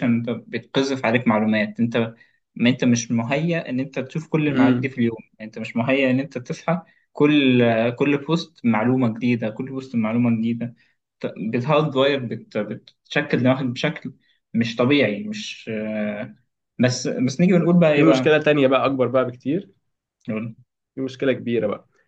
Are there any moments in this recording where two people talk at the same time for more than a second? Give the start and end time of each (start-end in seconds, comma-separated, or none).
none